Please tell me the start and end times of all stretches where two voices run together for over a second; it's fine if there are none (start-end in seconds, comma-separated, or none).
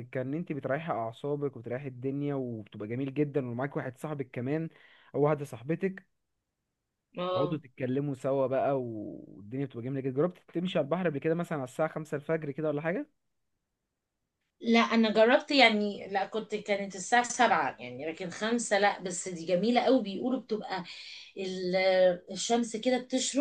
none